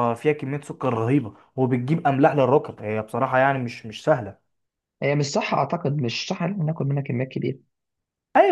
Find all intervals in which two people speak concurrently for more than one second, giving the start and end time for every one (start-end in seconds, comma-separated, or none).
none